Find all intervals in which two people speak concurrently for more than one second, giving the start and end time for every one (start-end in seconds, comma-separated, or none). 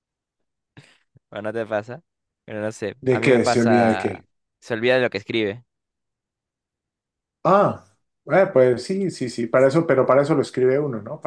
3.0-4.2